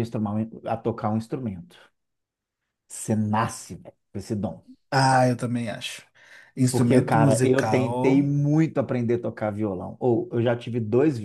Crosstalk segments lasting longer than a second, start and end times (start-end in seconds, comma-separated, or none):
6.7-8.3